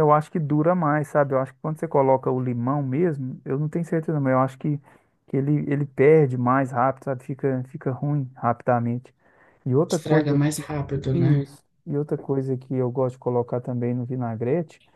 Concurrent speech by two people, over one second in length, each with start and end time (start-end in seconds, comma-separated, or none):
none